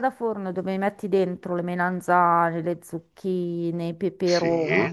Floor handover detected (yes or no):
no